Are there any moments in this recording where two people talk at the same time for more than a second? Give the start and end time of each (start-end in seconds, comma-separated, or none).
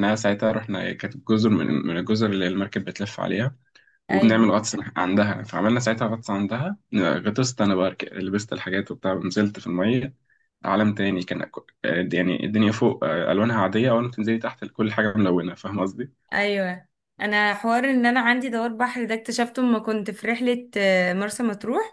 none